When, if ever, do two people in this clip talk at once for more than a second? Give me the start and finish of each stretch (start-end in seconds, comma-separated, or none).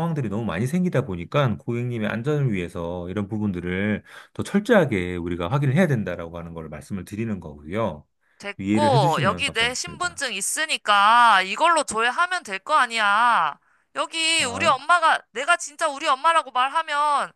8.6-10.2